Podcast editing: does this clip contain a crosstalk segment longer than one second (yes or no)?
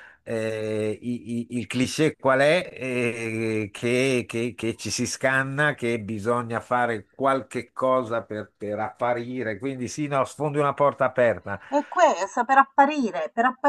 no